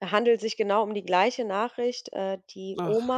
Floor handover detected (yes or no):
no